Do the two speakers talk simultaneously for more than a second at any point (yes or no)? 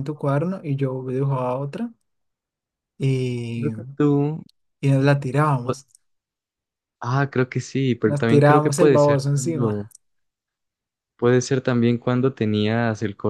yes